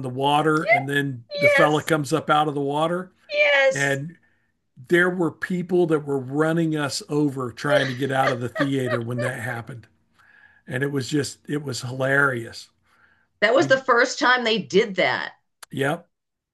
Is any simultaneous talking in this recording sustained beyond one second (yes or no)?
no